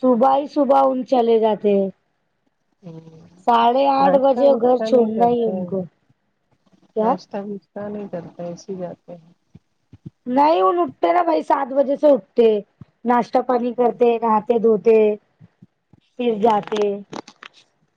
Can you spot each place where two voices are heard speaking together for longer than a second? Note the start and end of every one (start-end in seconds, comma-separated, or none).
4.0-5.6